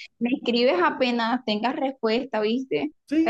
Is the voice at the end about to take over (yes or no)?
yes